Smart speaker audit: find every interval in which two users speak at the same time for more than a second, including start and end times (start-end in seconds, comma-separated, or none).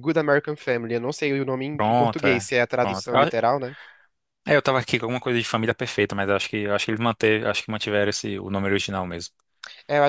1.7-3.3